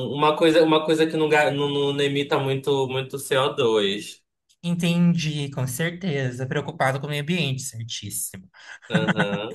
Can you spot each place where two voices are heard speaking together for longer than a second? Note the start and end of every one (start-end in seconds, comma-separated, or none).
none